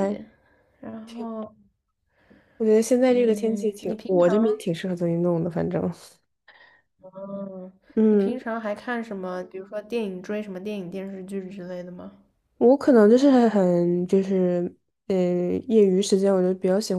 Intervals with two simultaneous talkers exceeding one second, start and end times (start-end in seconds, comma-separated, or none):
3.1-4.3